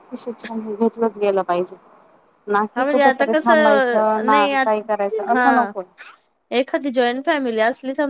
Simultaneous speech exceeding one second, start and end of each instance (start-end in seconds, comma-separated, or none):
2.7-4.6